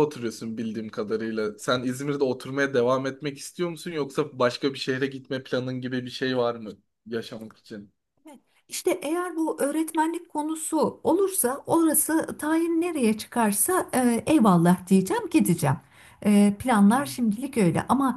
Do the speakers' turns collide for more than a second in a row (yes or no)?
no